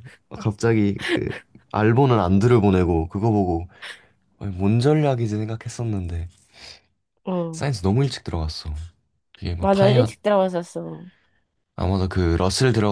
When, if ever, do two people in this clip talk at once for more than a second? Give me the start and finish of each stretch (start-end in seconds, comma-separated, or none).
none